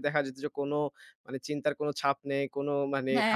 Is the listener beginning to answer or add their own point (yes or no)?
no